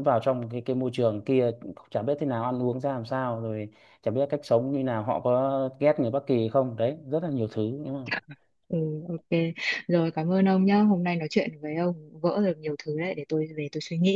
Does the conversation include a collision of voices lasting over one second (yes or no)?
no